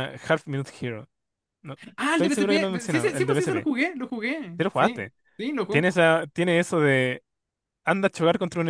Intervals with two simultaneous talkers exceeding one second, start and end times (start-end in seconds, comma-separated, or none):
2.1-3.7